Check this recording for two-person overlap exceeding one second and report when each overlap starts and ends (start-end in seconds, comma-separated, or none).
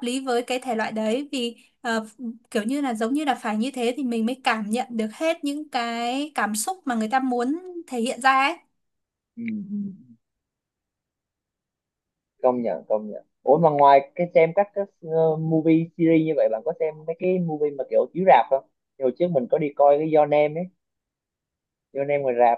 none